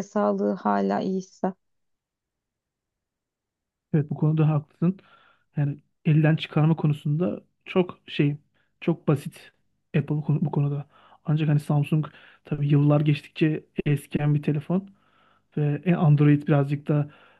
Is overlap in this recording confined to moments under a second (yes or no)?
yes